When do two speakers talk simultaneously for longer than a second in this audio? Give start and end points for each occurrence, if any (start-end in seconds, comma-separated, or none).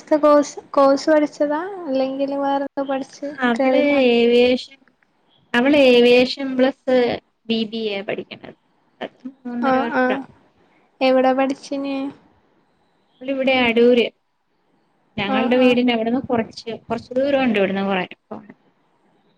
none